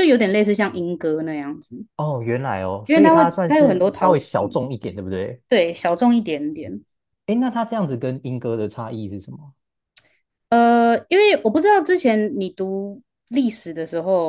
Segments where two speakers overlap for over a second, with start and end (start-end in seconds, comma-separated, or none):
2.9-4.6